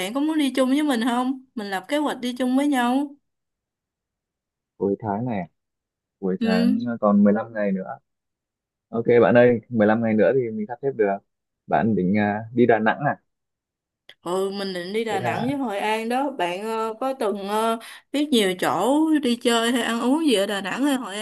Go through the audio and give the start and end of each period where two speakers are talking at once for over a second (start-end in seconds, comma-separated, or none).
none